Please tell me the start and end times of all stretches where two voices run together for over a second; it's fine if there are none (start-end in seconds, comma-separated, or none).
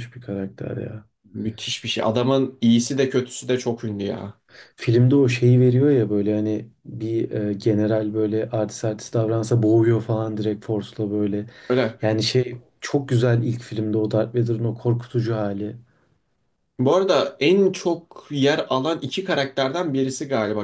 none